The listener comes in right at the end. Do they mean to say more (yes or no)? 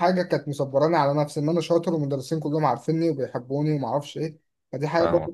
no